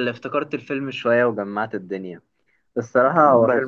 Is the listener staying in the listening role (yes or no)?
yes